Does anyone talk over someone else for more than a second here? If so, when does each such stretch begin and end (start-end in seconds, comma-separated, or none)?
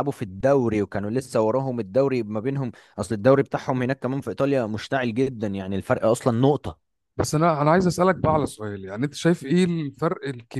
none